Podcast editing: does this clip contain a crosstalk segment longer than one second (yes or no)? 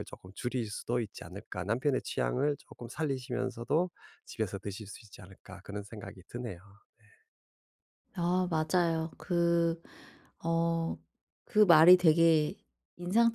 no